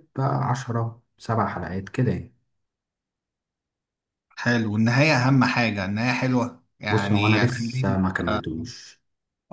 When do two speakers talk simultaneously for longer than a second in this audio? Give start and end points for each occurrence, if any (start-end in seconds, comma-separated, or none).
6.9-8.4